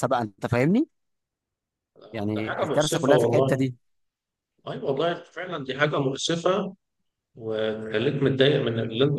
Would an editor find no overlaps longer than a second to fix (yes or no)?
no